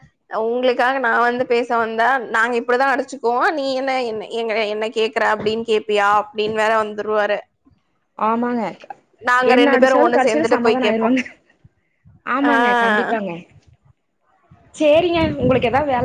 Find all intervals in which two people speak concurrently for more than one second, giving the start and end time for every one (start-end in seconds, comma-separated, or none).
9.5-11.2